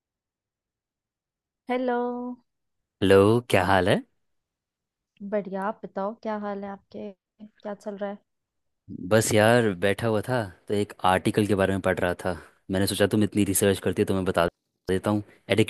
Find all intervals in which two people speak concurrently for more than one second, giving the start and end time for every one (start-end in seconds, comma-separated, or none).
none